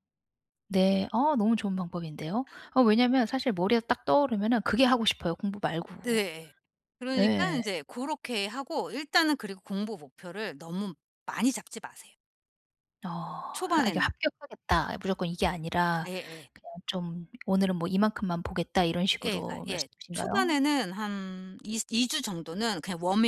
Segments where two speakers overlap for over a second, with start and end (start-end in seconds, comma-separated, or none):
19.2-20.6